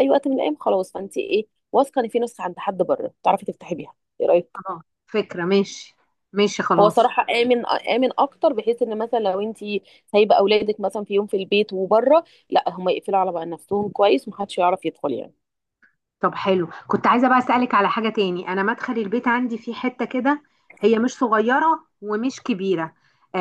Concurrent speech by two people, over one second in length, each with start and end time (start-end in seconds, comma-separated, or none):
none